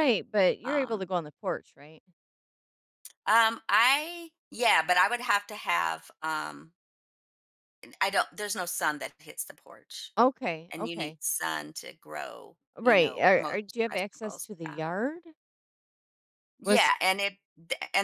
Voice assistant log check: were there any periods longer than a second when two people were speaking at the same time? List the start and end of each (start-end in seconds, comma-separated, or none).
12.8-14.8